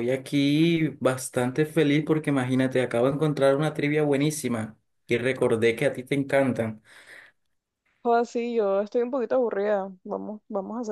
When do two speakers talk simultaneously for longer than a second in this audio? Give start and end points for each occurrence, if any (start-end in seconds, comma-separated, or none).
none